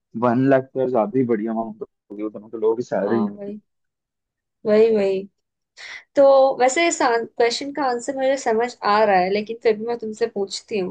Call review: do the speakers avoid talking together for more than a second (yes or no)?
yes